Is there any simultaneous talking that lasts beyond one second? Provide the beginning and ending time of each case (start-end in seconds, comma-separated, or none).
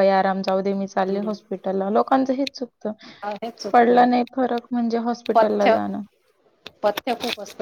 none